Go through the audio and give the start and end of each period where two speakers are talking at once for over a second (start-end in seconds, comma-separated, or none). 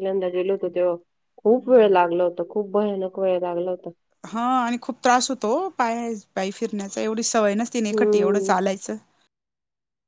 none